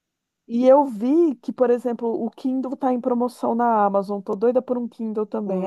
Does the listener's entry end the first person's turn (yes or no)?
yes